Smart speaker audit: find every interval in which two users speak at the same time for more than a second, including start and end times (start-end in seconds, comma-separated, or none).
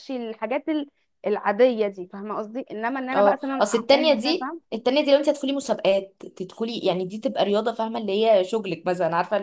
3.1-4.6